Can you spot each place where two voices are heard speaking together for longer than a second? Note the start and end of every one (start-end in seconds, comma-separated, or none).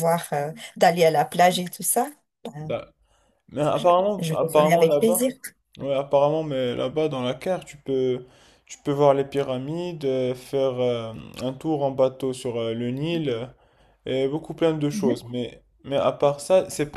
3.7-5.3